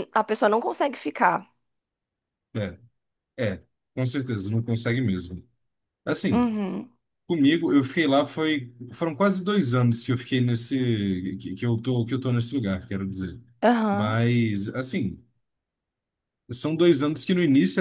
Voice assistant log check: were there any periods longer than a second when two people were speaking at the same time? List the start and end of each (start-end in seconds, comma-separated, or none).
none